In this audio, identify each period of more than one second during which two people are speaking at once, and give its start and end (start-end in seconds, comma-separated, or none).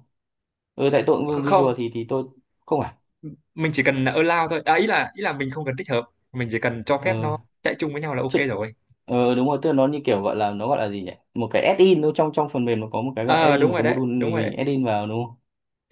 13.2-14.6